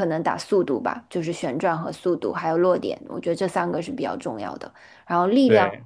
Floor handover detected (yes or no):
no